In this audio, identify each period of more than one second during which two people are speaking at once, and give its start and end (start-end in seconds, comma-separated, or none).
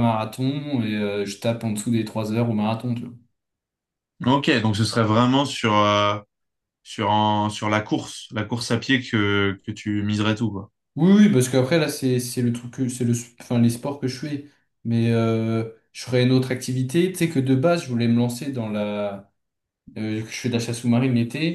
none